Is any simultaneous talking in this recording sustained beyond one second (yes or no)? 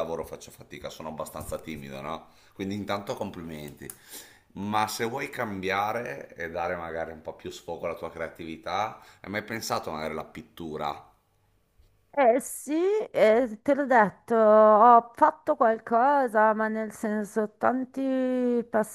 no